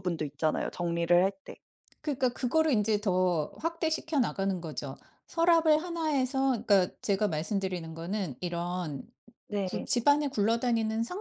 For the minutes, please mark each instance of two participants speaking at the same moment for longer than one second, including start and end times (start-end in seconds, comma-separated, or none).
none